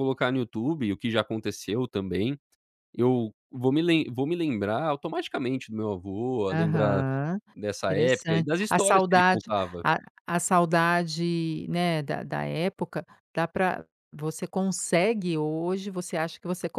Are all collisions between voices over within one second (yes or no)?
no